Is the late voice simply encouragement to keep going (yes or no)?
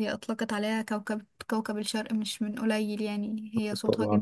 no